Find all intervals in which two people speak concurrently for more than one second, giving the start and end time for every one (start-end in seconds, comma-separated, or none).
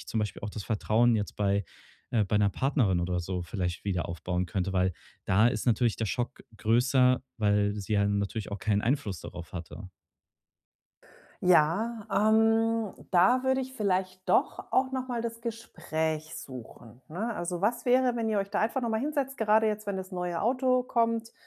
none